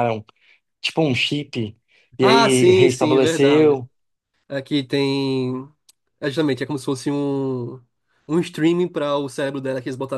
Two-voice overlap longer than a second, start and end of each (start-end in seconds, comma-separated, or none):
2.2-3.8